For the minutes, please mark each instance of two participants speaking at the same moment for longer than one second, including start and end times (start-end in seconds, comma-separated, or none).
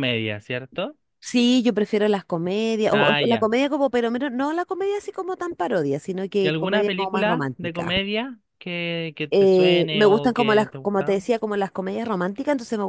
6.4-7.9, 9.3-11.2